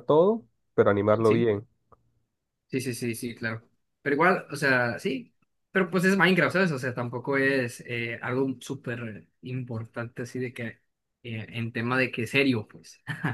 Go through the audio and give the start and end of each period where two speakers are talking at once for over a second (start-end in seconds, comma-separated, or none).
none